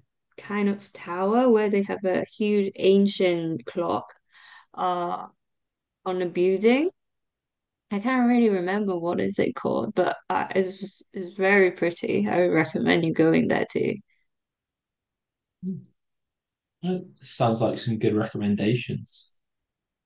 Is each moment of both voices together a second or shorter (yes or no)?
yes